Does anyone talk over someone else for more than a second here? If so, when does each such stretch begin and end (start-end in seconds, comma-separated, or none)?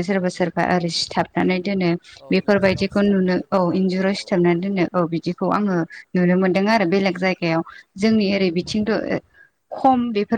2.4-4.4